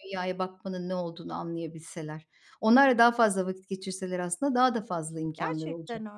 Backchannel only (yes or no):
no